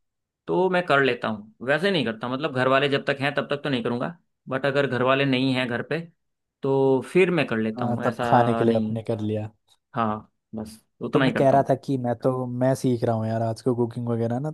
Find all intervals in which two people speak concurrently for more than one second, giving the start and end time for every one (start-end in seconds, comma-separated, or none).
7.8-9.0